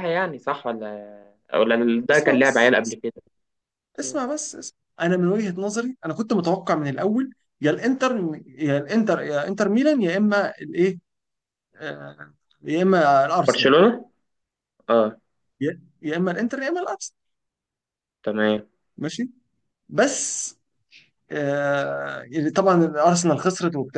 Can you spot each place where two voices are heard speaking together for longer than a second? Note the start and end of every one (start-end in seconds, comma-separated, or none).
none